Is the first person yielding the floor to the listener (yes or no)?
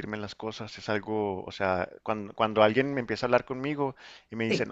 no